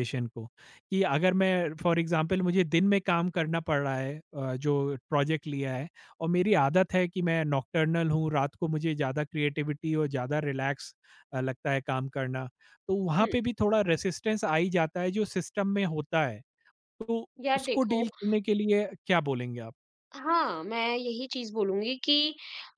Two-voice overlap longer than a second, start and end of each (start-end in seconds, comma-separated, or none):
none